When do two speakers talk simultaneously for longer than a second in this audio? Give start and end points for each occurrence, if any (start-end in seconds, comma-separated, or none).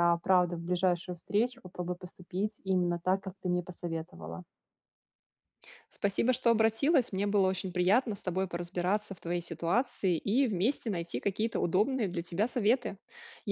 none